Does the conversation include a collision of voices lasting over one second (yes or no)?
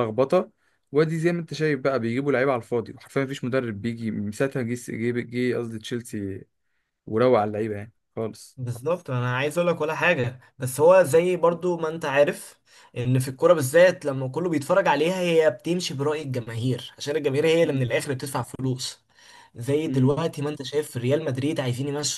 no